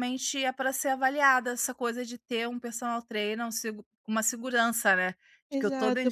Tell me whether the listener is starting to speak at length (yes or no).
yes